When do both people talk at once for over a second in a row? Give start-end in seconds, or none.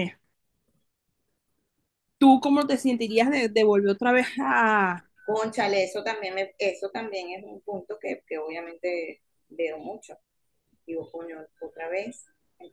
none